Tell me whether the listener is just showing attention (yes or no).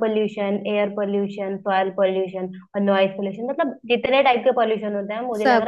yes